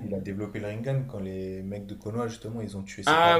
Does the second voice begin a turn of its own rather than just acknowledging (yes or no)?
yes